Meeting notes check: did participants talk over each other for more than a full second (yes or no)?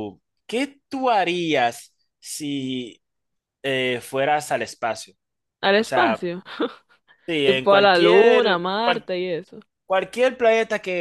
yes